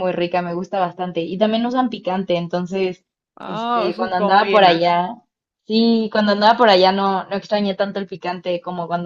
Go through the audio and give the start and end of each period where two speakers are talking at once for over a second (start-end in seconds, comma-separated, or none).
3.4-4.8